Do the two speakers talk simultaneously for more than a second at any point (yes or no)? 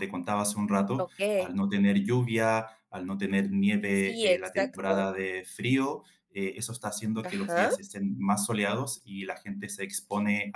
yes